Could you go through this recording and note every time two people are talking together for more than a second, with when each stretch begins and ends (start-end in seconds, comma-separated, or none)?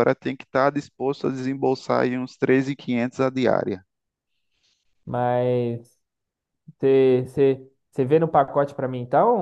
none